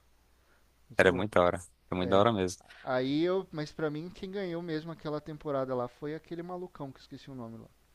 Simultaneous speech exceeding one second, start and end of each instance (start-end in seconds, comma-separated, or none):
none